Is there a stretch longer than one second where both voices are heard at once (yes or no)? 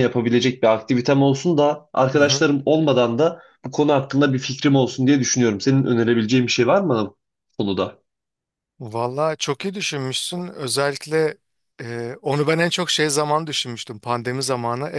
no